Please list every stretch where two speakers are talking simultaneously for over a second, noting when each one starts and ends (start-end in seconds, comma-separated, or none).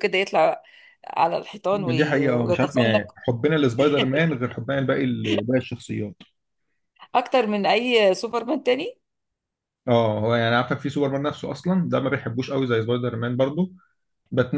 1.7-3.2